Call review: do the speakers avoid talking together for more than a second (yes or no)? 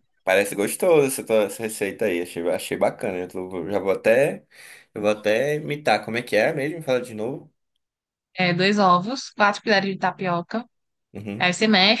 yes